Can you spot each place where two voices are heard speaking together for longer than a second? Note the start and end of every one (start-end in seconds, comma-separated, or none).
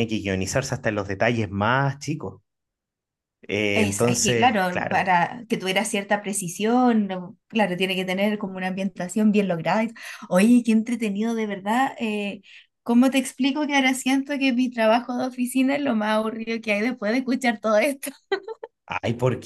3.7-5.1